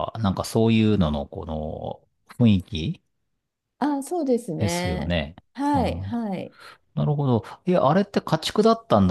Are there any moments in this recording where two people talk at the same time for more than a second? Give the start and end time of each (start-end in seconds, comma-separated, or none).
none